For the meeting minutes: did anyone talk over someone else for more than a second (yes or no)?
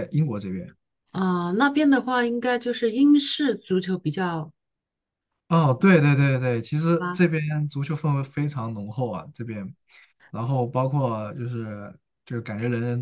no